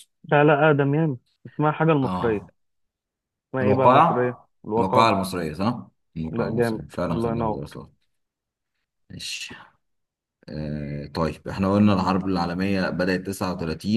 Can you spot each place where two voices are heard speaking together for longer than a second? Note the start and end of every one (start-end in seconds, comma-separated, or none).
3.6-5.2, 6.3-7.8